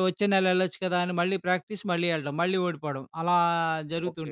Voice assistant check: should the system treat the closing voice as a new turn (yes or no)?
yes